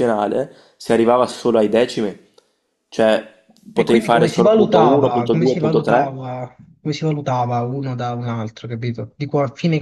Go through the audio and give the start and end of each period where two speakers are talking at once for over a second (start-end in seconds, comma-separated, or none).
3.7-6.2